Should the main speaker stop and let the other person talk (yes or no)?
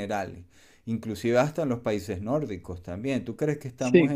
no